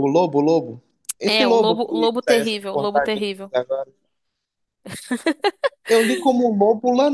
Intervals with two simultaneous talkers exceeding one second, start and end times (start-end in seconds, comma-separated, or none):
1.2-3.5